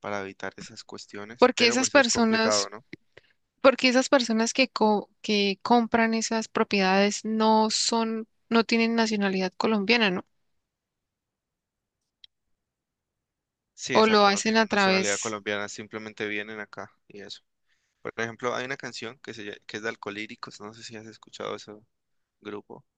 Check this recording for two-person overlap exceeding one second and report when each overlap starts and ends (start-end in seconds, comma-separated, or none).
1.4-2.7, 13.9-15.4